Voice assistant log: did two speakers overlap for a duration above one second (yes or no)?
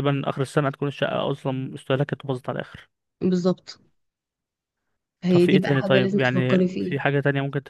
yes